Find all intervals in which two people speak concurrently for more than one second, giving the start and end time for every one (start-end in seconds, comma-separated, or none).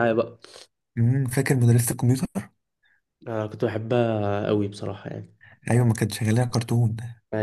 none